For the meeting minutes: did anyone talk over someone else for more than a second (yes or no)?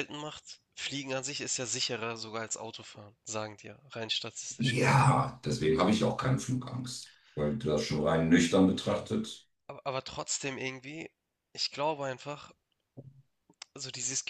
no